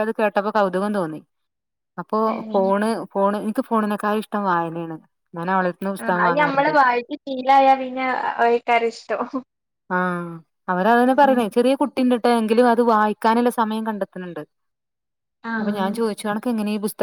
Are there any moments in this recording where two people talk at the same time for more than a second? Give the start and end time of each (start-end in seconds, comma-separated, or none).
none